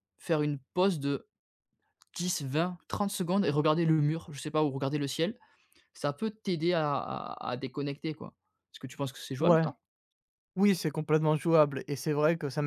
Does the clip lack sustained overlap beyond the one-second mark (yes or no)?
yes